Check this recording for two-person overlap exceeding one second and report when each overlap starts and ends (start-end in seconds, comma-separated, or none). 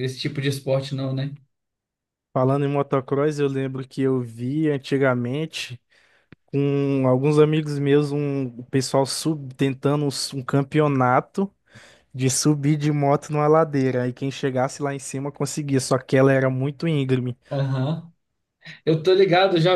none